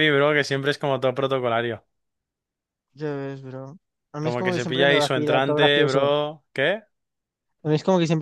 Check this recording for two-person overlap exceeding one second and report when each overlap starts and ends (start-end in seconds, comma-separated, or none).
4.2-6.1